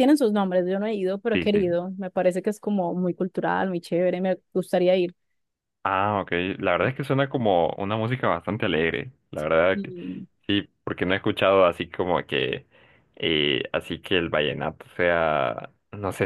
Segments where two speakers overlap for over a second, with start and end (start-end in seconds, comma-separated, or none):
none